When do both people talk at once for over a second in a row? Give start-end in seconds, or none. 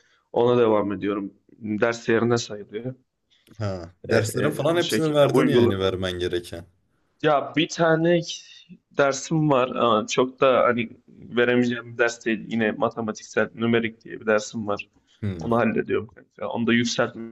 4.1-5.8